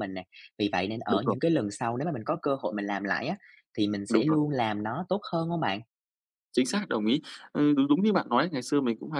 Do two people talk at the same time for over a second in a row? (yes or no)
no